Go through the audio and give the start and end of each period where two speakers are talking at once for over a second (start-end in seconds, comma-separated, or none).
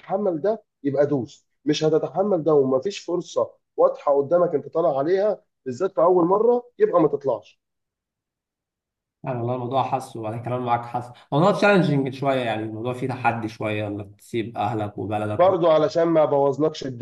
none